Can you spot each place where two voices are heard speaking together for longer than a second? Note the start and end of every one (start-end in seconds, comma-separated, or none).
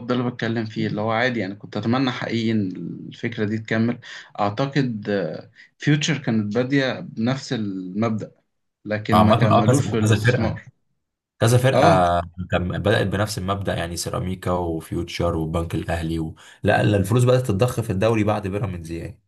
9.1-10.6